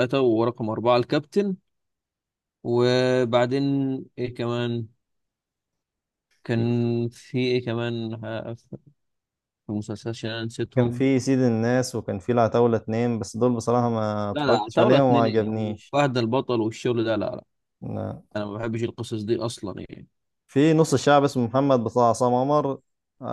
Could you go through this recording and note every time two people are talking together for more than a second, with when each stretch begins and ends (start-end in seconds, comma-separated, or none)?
14.3-15.9